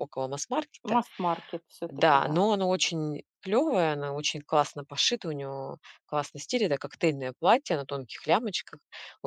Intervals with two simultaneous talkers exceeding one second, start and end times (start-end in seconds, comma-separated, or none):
none